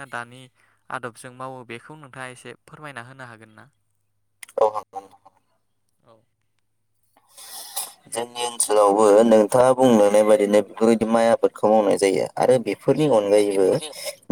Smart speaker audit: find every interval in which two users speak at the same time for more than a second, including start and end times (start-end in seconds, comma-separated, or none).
none